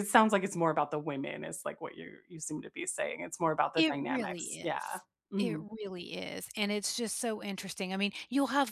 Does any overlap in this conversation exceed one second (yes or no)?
yes